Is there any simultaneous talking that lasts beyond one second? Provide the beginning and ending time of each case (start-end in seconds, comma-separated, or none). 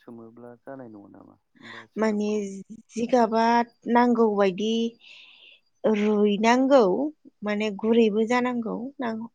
none